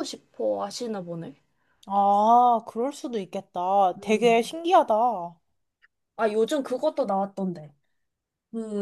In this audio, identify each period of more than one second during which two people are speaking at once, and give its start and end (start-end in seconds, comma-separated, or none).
none